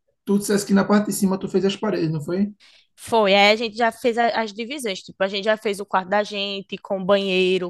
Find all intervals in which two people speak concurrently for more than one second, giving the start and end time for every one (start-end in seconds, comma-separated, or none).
none